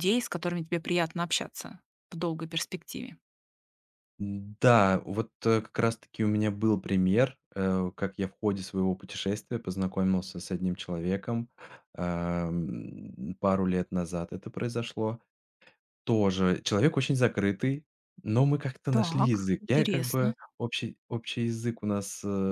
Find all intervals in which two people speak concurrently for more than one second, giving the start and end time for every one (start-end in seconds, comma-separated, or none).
18.9-20.4